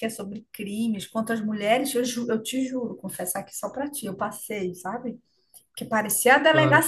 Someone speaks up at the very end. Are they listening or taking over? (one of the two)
listening